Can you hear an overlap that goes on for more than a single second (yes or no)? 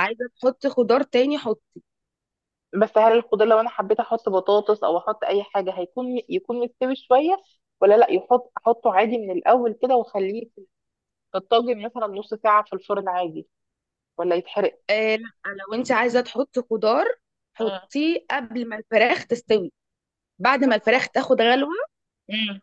no